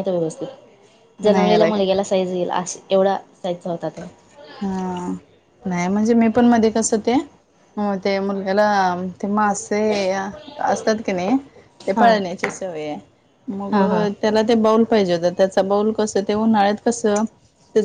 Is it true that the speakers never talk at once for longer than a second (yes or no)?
yes